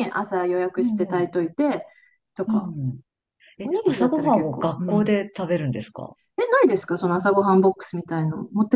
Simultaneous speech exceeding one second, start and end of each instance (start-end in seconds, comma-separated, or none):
3.6-5.1